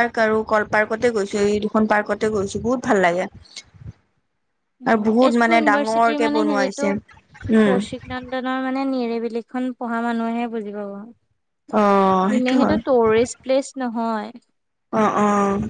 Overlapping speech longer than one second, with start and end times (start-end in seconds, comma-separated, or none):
4.9-6.9